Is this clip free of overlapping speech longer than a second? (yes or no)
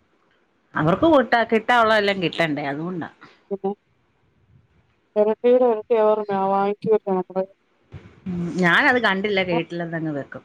yes